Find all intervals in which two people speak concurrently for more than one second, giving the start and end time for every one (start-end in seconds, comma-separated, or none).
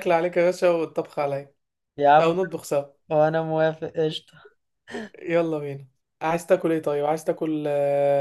none